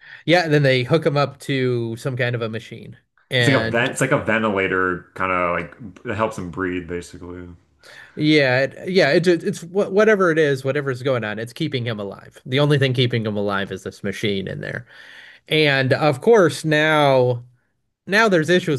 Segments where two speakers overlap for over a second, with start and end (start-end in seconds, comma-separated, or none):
none